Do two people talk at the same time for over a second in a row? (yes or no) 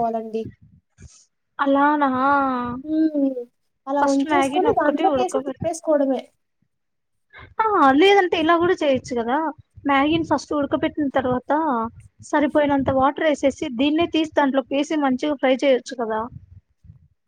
yes